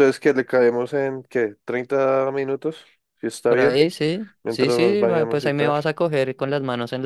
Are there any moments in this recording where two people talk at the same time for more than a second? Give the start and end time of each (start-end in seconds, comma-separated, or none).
4.4-5.8